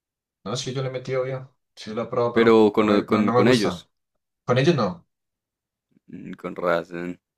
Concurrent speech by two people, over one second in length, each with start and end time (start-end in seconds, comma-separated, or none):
2.3-3.9